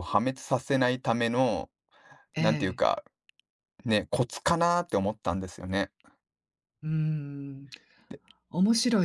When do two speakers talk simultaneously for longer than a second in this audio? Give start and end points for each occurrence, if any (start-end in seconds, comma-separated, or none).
none